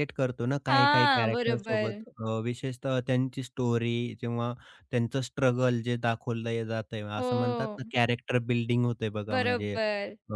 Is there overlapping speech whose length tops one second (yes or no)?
yes